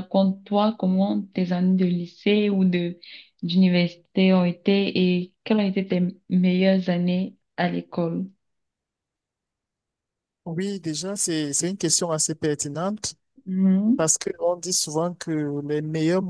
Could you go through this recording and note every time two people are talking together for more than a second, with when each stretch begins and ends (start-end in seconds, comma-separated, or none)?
none